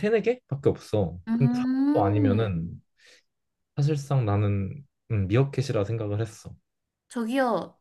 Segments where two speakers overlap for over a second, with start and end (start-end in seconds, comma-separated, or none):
1.3-2.6